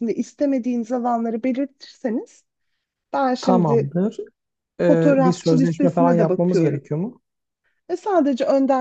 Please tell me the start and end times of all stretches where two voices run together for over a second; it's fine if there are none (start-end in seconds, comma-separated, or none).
4.9-6.8